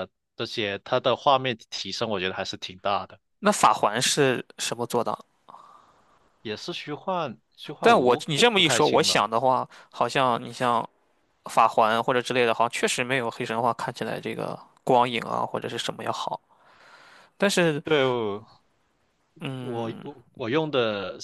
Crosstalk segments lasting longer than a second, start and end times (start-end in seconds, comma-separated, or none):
7.8-9.3